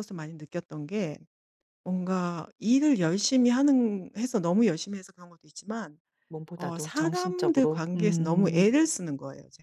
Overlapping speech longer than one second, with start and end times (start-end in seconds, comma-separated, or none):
6.5-8.7